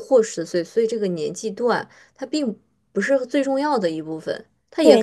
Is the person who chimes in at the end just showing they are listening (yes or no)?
no